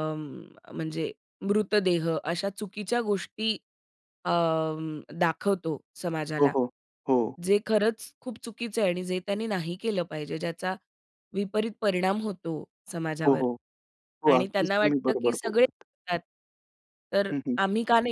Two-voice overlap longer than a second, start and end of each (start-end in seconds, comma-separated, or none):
14.3-15.8